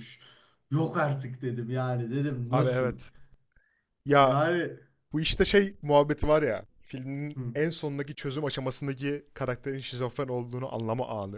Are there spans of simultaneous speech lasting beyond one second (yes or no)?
no